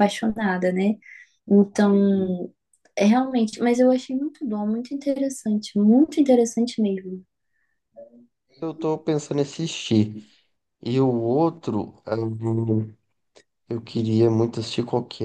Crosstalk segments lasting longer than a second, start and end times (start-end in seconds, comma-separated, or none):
none